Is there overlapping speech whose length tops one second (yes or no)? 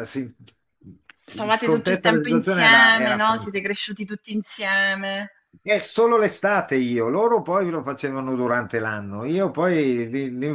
yes